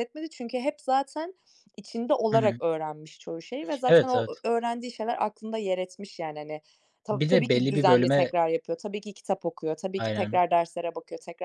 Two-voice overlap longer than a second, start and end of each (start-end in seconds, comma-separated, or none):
7.1-8.3